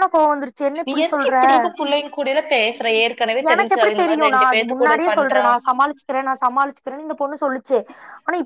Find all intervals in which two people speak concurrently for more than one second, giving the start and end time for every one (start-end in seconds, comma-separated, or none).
3.5-5.5